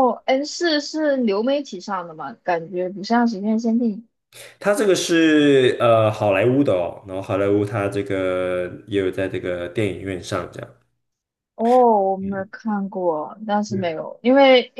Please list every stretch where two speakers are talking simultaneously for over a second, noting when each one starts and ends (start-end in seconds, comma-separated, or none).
none